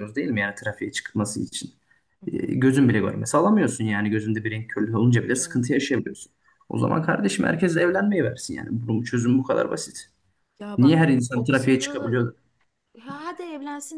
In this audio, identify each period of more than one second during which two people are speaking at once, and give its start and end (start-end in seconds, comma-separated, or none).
10.8-12.2